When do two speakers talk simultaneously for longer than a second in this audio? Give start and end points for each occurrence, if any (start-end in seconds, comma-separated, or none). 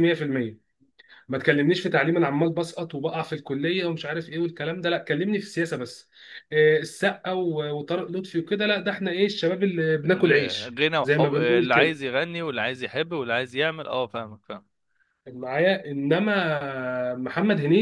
10.1-12.0